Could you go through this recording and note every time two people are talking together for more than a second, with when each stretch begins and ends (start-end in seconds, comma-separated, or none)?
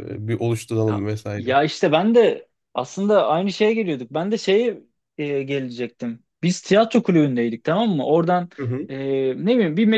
none